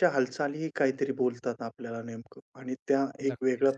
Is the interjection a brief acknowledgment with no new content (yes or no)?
yes